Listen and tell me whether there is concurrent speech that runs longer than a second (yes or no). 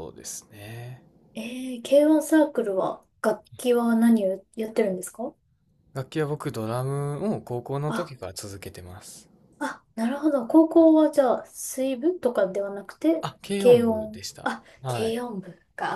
yes